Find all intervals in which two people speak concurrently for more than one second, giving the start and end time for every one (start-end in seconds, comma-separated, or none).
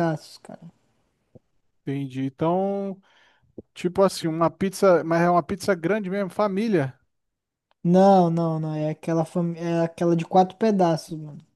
none